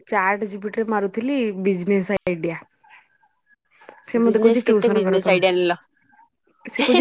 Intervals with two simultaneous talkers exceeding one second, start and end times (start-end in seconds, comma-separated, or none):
4.2-5.7